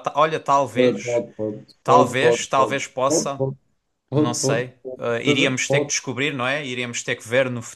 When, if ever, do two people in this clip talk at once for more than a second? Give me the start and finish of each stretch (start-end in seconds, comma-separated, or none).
1.8-3.4, 4.1-5.9